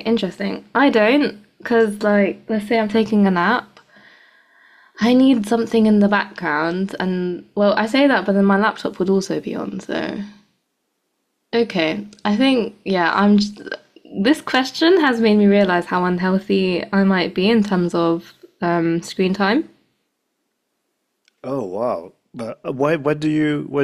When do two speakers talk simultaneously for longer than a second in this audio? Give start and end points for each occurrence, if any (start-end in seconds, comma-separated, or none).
none